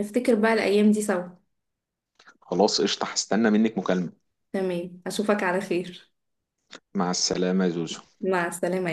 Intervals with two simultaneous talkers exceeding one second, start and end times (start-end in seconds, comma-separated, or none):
none